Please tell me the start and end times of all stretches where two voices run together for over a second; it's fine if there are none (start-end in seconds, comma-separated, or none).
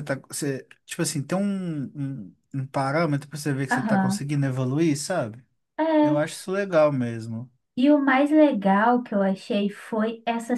none